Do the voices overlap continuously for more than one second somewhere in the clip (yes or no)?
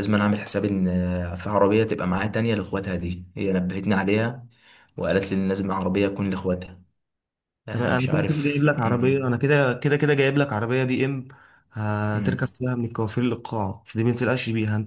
yes